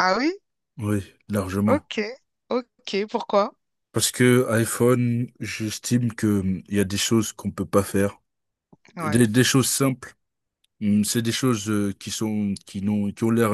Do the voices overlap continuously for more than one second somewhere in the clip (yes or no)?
no